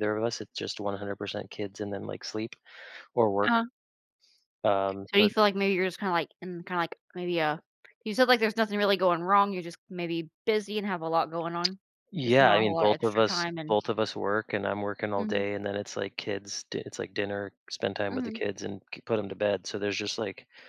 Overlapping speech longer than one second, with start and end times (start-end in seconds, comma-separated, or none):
12.2-13.8